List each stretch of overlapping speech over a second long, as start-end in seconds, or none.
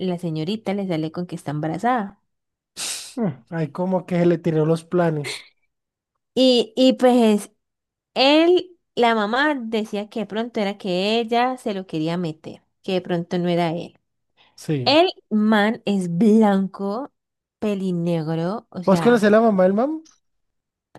none